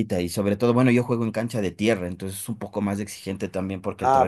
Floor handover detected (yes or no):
yes